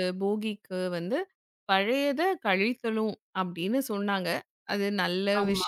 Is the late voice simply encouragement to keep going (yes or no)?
yes